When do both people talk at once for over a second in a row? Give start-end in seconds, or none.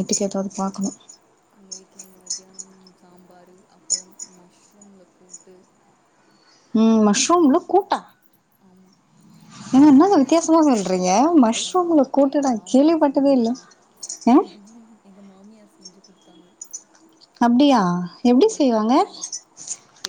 11.7-13.5